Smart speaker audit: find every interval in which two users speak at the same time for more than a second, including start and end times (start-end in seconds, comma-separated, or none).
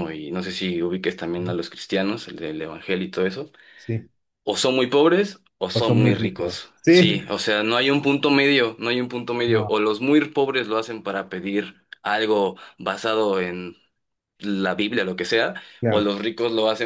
5.7-7.2